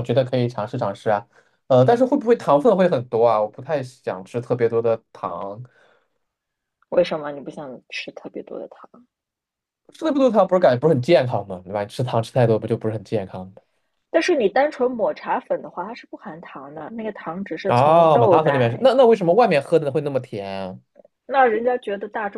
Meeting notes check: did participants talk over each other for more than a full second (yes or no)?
yes